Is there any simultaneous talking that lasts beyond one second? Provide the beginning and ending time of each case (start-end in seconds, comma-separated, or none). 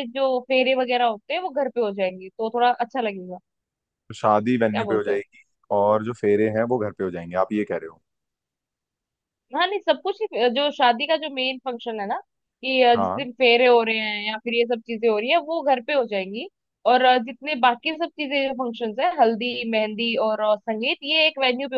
none